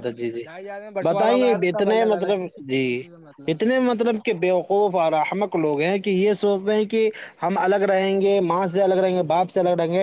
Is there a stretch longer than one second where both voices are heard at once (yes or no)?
yes